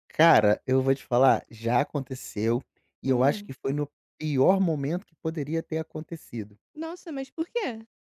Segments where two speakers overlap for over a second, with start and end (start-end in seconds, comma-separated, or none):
none